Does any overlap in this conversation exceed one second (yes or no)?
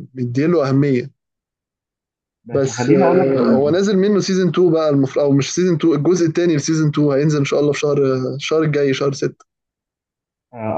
yes